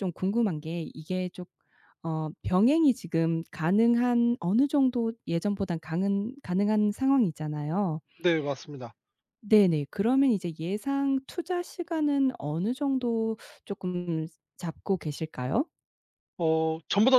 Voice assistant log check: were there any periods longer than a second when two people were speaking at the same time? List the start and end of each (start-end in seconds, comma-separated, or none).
none